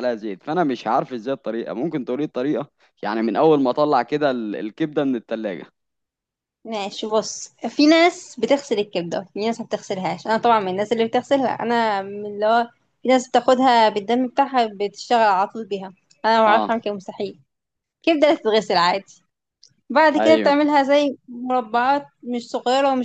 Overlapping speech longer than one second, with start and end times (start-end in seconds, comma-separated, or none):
none